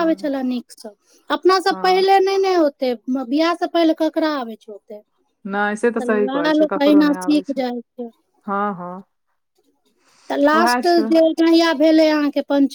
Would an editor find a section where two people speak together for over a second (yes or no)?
yes